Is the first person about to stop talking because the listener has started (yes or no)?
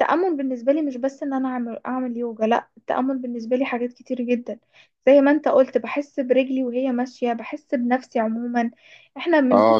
no